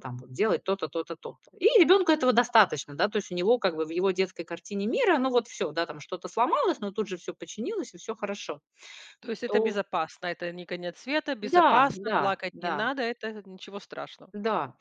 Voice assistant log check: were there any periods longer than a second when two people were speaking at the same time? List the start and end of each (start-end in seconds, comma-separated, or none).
11.4-12.9